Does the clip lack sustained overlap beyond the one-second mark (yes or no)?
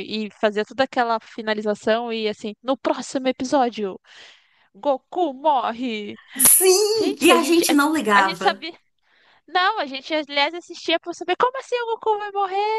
no